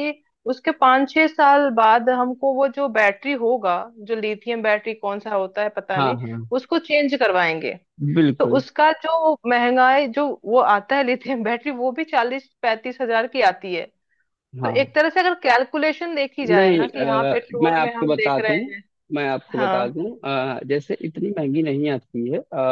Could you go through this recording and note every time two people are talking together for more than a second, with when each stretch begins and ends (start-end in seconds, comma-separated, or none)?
16.5-18.6